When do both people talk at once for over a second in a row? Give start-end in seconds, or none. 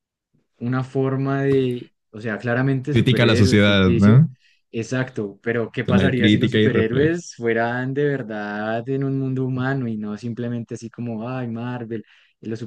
2.9-4.2, 5.9-7.2